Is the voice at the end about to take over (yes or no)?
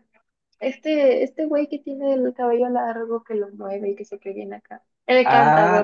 yes